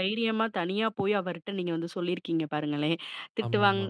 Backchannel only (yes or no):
yes